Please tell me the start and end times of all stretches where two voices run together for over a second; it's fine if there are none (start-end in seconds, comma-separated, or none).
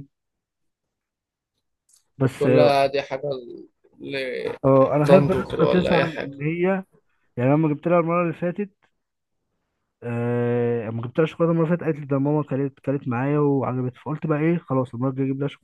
5.1-6.3